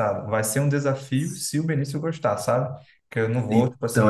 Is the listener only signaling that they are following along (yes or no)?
no